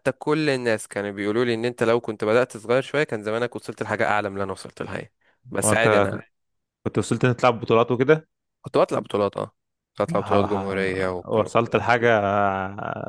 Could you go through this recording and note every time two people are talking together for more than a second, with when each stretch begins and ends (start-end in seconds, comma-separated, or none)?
10.1-11.4